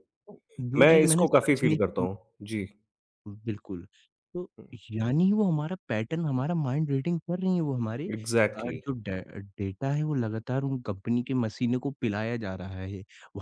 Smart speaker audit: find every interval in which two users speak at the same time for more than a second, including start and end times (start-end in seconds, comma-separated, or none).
0.8-2.1